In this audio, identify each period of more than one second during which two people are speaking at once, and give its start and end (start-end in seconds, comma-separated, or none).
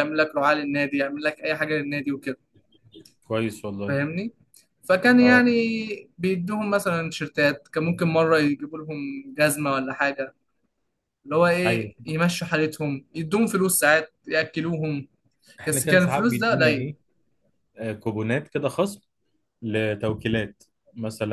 15.7-16.9